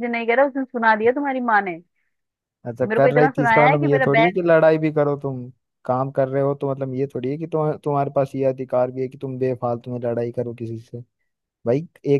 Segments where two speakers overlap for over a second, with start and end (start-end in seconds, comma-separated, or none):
2.8-4.4